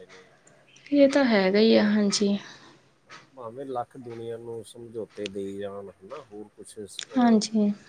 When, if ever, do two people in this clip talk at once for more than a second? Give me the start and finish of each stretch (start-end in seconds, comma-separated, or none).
0.9-2.4